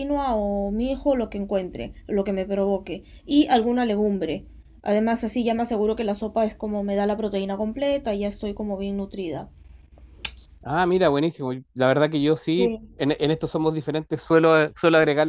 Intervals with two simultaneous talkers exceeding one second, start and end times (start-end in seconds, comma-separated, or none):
none